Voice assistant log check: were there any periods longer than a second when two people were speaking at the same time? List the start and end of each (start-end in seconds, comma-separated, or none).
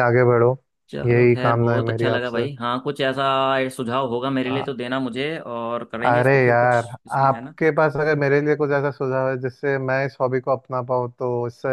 1.1-2.5, 6.0-7.5